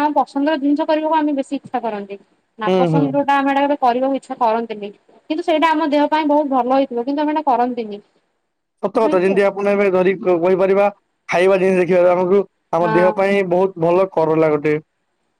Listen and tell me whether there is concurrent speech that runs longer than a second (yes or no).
no